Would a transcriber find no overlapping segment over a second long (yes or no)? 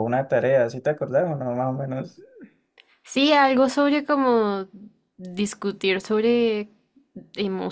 yes